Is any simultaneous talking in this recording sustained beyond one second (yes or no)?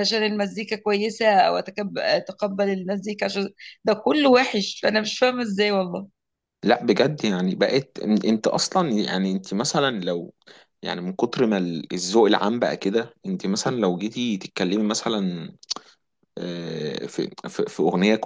no